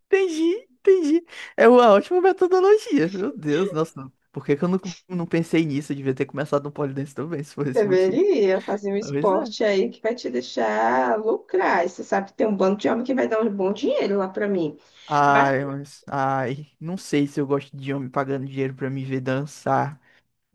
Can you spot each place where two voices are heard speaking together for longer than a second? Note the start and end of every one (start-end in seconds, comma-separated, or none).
none